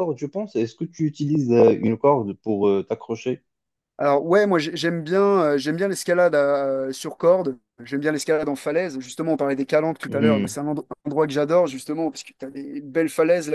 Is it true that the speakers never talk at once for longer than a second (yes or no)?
yes